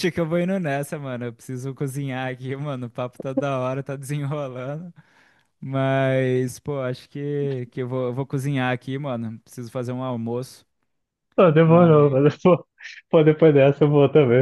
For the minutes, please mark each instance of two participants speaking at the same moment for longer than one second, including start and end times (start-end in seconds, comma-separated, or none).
none